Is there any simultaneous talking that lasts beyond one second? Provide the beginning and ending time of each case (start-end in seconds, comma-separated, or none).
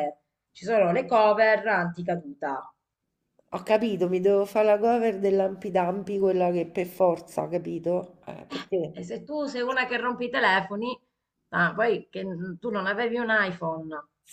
none